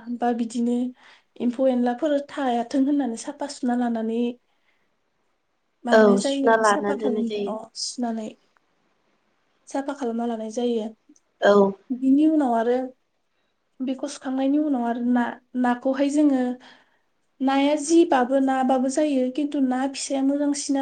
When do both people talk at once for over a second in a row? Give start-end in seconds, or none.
5.9-7.5